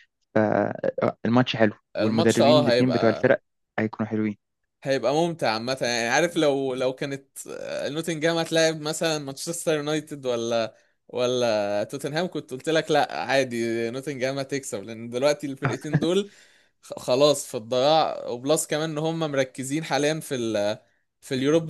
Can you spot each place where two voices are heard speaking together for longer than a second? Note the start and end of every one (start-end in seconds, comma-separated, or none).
1.9-3.4